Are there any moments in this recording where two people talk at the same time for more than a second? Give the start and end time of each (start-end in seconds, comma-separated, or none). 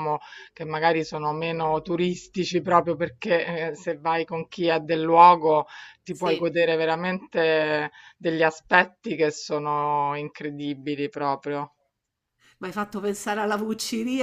none